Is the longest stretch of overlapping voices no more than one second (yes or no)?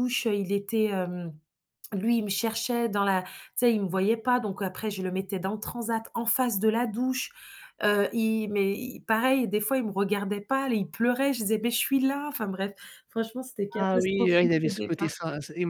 no